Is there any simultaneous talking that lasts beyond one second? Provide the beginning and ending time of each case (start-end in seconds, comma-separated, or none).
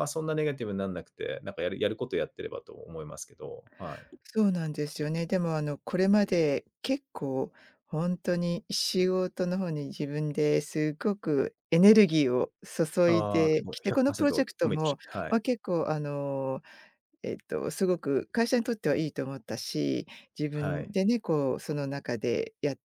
13.1-15.4